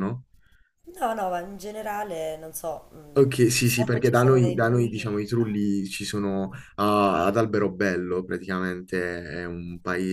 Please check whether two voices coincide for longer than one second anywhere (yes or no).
yes